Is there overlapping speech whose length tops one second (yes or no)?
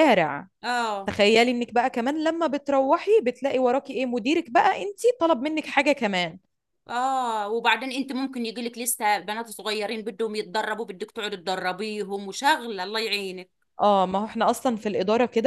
no